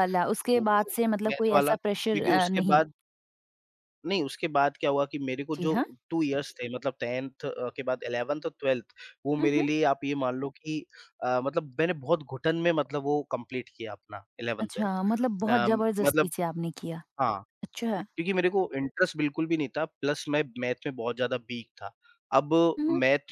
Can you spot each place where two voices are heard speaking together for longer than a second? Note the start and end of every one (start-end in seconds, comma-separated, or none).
0.5-2.8, 14.6-16.3